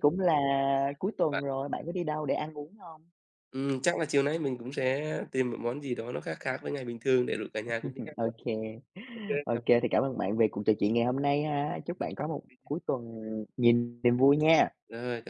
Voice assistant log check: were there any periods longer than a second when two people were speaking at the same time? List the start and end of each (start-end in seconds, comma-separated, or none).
none